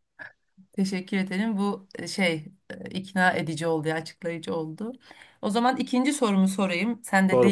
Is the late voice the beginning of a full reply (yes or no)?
no